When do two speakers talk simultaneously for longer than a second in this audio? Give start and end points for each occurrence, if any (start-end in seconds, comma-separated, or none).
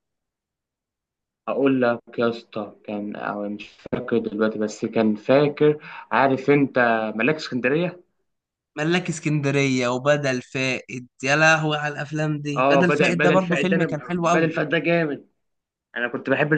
12.6-14.6